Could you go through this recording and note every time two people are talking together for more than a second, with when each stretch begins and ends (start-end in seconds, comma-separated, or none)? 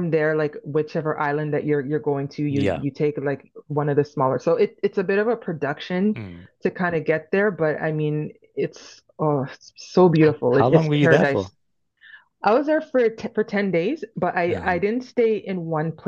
10.2-11.5